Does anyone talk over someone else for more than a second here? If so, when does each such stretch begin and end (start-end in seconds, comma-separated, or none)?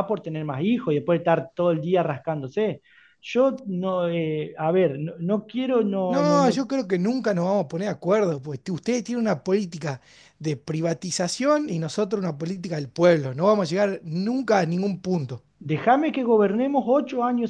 none